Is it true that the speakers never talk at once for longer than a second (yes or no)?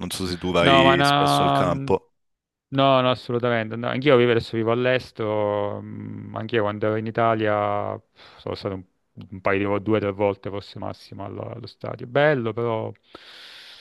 no